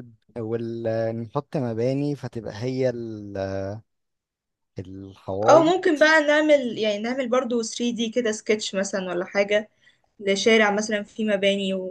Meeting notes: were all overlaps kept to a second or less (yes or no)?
yes